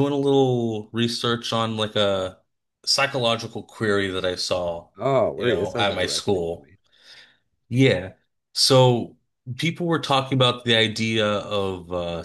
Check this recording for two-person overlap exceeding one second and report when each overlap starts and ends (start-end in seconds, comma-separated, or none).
5.4-6.7